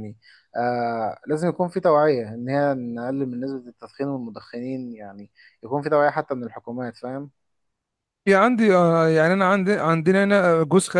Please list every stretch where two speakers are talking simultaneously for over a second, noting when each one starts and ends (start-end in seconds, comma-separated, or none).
none